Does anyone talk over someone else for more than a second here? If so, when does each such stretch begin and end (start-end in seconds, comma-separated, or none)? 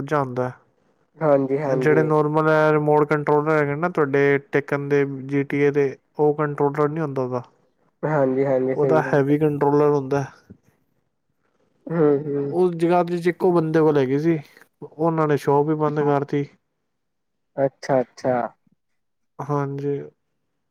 none